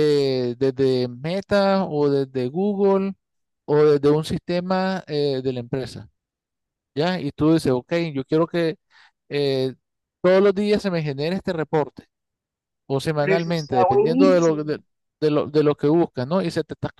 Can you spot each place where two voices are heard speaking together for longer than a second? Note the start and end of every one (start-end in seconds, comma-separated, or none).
13.2-14.8